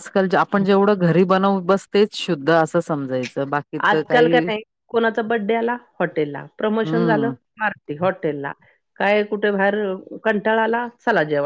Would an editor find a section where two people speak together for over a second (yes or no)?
no